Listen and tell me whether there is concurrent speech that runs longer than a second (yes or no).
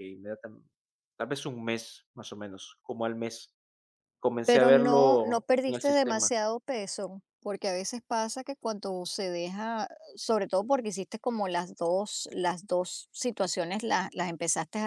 yes